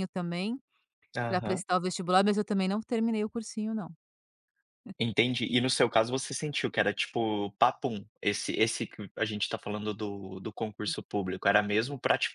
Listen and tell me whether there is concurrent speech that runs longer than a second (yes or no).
no